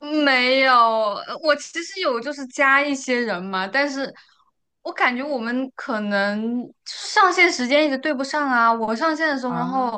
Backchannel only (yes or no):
yes